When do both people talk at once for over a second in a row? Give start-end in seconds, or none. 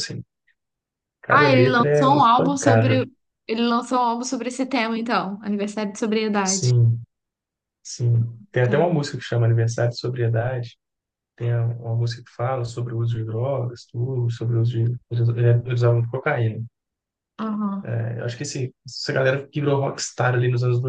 1.3-3.0